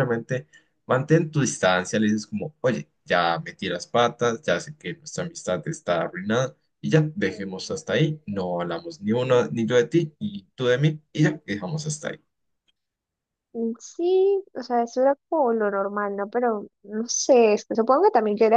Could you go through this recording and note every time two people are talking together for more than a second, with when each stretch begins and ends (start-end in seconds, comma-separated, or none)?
none